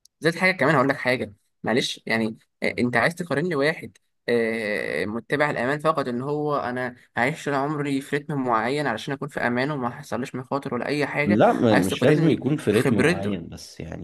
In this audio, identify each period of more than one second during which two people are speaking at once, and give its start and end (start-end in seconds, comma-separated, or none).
11.2-13.4